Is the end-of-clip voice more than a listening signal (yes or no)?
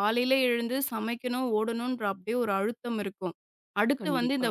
no